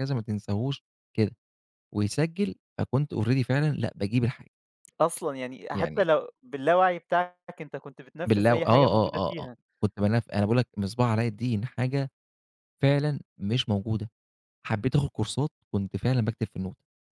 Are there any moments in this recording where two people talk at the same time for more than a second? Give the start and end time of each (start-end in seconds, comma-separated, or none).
8.3-9.6